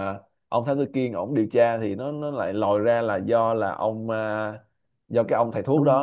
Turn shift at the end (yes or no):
no